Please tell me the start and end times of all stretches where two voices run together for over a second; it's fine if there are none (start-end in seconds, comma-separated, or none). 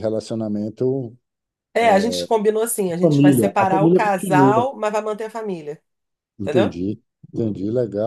3.0-4.7